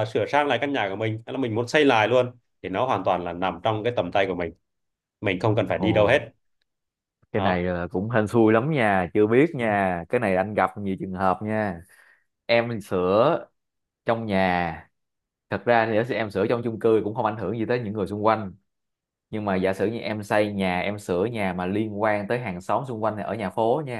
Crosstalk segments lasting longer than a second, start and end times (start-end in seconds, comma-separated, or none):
none